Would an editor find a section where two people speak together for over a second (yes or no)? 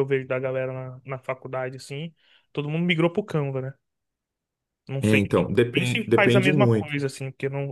yes